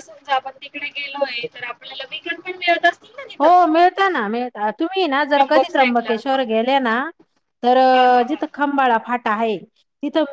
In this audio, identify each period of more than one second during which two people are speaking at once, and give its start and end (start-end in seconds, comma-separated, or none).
5.2-6.4